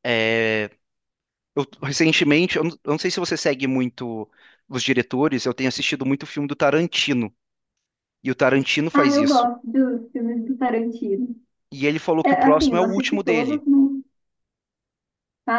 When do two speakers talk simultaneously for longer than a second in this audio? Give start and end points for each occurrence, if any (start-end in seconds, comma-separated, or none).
12.2-13.6